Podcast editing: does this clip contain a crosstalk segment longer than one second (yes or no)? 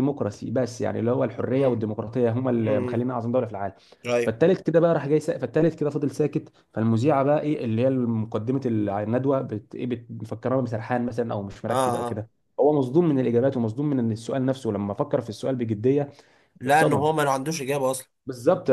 no